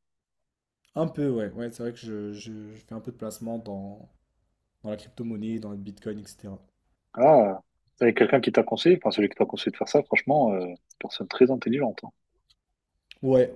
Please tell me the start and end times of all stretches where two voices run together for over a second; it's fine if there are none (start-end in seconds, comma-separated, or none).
none